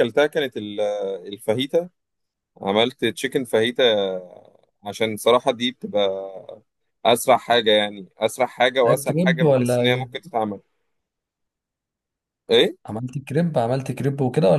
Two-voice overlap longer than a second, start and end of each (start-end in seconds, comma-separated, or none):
8.8-10.1